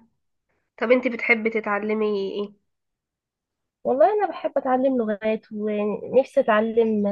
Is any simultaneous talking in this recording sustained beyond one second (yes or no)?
no